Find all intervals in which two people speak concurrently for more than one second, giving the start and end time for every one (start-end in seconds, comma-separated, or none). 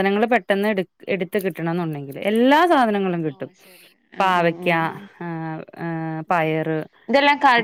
none